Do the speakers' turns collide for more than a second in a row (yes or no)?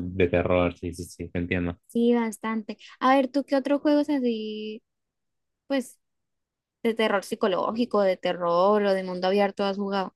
no